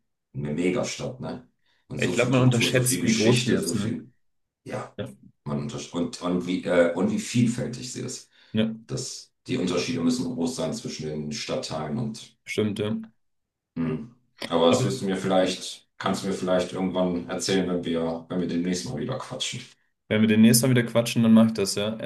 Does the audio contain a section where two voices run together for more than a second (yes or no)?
yes